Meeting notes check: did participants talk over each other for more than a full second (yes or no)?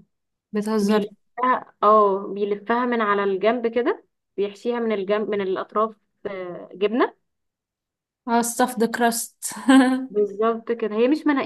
no